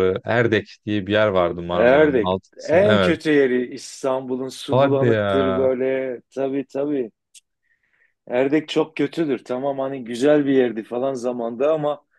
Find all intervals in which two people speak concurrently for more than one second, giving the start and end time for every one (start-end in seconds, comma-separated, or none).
1.7-3.1